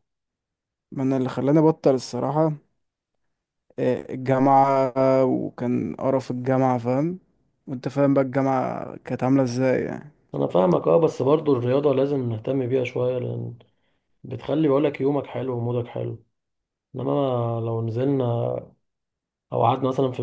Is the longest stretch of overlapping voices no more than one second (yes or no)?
yes